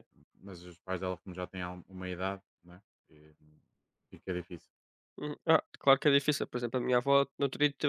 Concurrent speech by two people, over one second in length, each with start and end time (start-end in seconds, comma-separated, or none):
none